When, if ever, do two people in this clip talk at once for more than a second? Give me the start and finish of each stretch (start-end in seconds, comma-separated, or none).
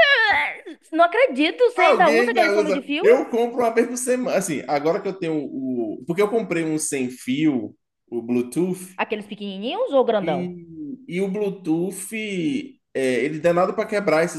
1.7-3.0